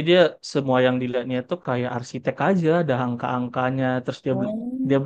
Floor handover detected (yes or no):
no